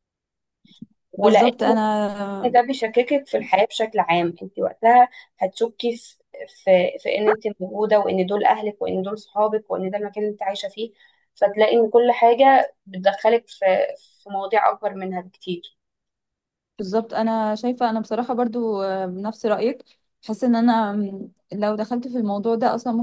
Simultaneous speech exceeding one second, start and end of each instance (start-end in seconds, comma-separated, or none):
none